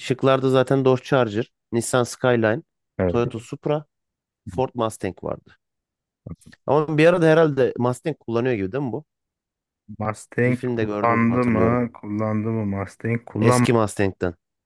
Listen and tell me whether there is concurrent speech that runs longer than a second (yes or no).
yes